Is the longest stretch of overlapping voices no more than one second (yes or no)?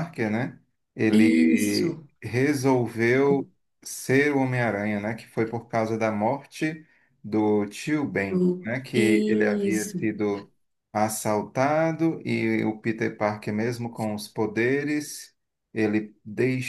no